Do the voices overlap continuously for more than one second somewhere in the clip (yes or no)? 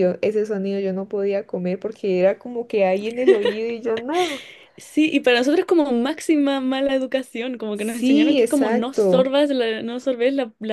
yes